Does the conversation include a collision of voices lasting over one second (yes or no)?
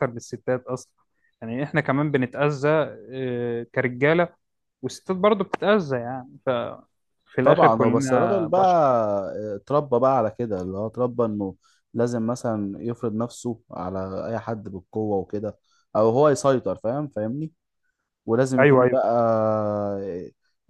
yes